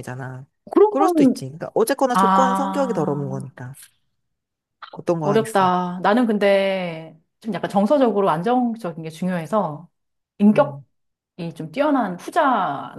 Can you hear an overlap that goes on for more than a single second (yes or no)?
yes